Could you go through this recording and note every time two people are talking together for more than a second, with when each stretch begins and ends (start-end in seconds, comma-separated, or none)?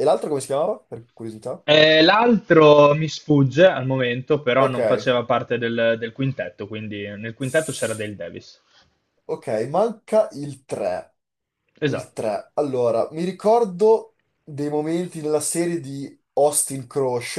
none